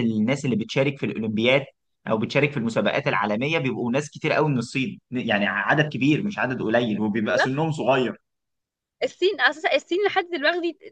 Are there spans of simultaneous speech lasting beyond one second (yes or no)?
no